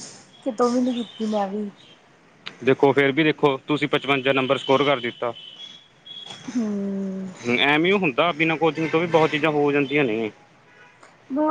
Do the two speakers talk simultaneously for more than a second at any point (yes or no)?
no